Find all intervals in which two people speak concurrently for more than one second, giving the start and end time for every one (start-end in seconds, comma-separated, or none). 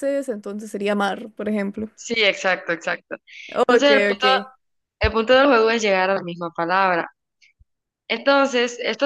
none